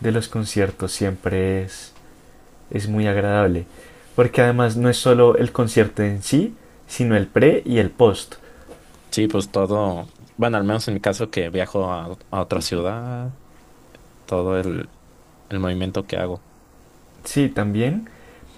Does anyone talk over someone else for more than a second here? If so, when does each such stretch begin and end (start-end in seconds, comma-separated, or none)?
none